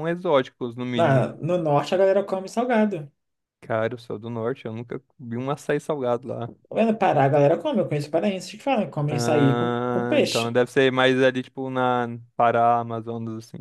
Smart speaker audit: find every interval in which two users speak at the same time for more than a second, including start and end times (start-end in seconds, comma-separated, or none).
9.1-10.6